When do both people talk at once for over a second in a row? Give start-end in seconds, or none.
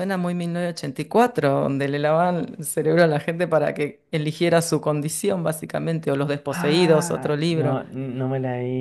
6.5-7.8